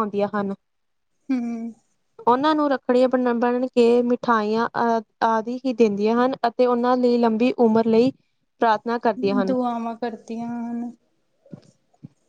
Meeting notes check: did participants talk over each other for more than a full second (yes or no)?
no